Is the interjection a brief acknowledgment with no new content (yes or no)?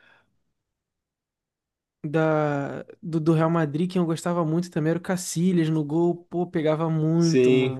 no